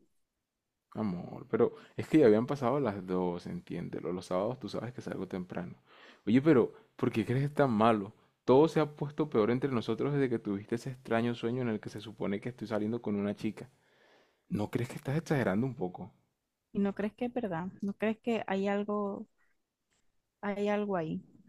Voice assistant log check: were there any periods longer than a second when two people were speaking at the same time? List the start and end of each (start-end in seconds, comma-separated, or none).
none